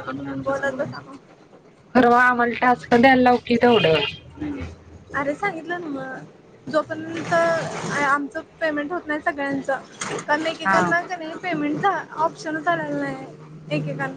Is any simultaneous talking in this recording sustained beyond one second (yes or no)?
no